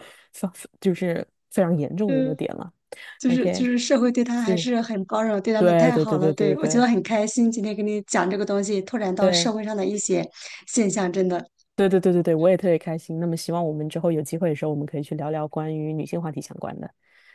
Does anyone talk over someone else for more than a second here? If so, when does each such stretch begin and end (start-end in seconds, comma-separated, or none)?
5.6-6.8